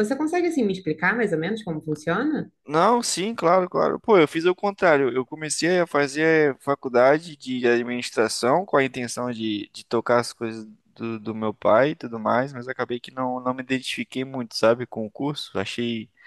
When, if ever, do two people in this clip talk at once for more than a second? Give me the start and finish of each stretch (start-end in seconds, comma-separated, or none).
none